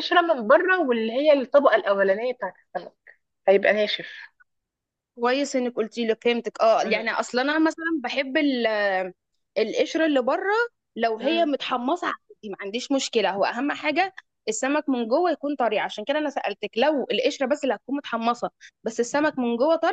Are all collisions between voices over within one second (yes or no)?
yes